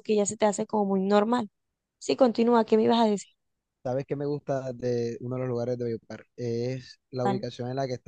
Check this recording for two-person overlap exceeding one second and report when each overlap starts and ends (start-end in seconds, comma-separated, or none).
none